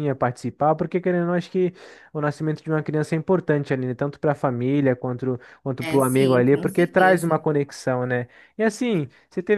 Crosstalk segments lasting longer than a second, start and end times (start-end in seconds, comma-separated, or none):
5.8-7.3